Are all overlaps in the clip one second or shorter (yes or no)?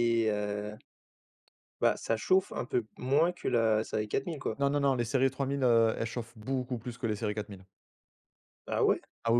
yes